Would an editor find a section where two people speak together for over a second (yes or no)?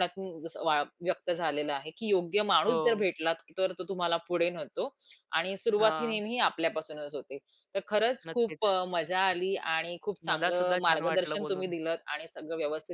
yes